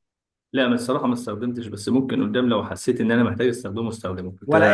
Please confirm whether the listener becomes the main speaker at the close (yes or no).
yes